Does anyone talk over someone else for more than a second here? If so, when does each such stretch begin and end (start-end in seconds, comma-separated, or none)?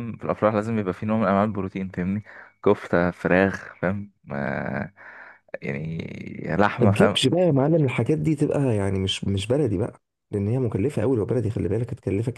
none